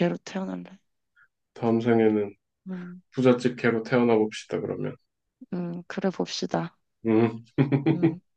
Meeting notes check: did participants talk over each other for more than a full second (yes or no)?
no